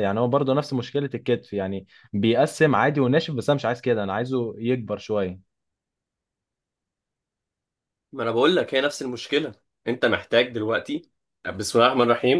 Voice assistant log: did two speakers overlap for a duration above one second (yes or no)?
no